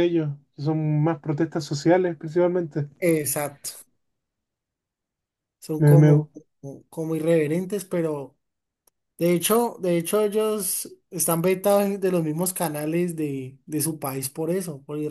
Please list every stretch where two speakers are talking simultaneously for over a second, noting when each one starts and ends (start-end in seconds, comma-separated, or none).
none